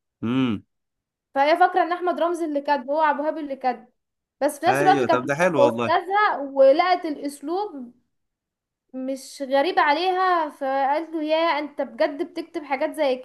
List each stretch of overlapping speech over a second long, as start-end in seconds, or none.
4.7-6.0